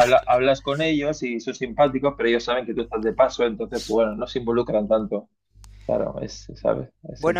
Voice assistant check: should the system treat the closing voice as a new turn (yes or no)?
yes